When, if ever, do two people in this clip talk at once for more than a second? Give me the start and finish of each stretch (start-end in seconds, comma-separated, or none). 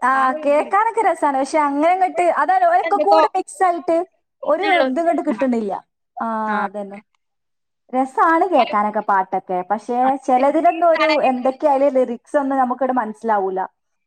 9.9-11.6